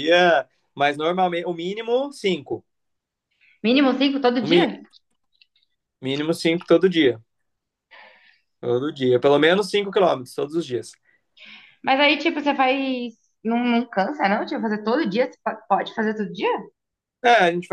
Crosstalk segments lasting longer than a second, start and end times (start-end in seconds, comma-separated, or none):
none